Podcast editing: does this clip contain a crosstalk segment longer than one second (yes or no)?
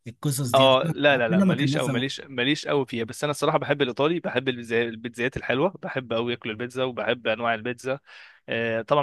yes